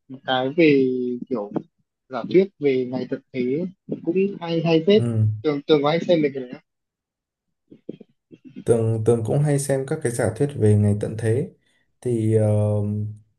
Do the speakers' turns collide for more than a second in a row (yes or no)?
no